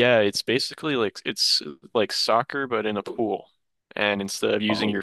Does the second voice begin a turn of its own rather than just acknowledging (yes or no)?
no